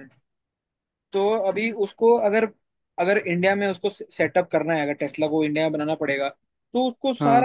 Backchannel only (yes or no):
yes